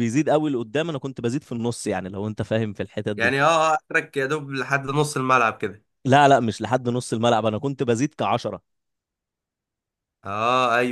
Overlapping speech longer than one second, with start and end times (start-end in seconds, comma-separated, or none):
none